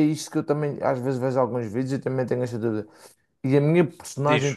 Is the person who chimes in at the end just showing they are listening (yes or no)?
yes